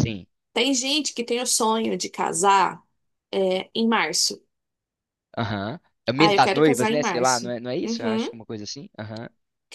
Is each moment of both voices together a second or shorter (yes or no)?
no